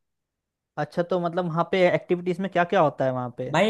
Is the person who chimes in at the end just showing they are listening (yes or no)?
no